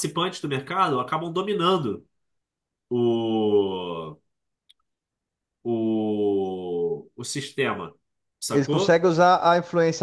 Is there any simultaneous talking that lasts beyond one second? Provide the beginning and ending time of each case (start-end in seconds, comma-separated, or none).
none